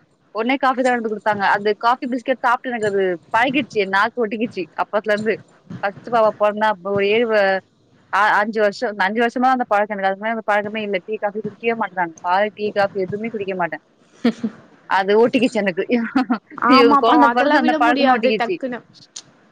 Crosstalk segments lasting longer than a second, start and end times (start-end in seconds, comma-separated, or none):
16.7-18.6